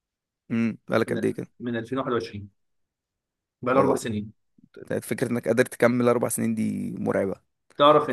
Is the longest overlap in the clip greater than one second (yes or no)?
no